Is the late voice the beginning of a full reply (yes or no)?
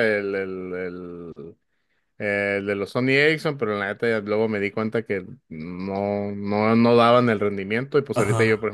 no